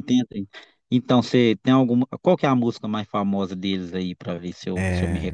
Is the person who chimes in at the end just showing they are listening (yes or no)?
no